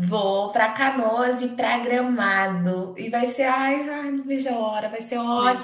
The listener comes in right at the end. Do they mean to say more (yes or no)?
no